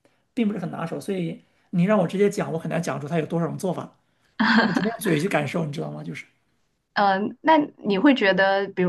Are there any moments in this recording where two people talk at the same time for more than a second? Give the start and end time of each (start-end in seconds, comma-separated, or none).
none